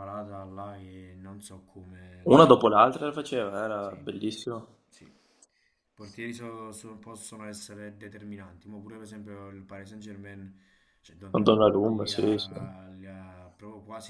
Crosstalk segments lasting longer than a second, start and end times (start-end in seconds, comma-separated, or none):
11.3-12.6